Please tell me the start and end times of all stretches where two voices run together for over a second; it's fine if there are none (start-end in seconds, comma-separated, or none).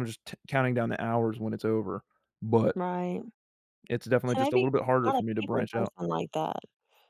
4.3-5.9